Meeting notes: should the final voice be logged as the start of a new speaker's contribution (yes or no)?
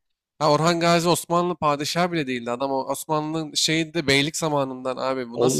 yes